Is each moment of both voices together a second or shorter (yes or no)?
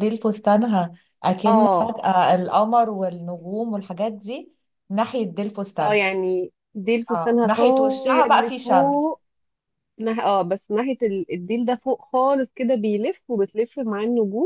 no